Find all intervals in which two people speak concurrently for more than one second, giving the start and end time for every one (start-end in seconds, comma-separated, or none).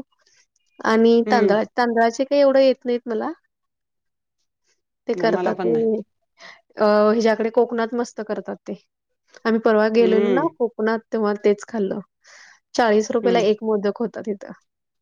none